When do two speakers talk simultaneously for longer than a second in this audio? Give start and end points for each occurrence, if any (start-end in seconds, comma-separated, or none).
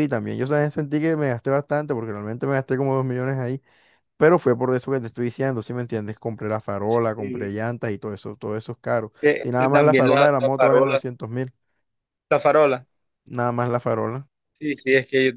9.2-11.0